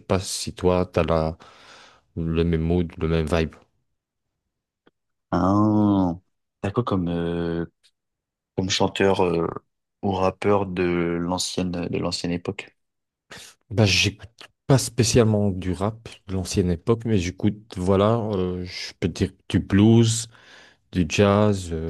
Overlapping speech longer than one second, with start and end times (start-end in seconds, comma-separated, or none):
none